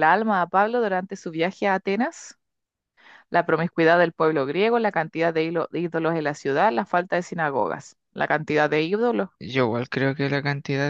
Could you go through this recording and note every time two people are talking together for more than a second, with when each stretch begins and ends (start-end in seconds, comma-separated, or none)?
none